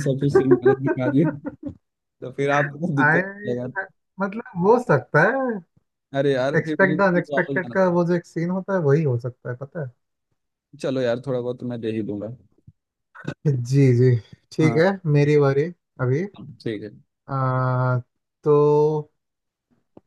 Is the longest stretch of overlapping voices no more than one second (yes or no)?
no